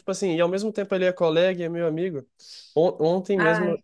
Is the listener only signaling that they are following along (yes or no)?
yes